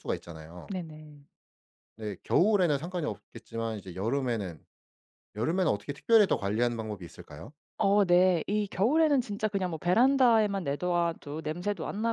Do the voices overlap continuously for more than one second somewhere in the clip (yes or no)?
no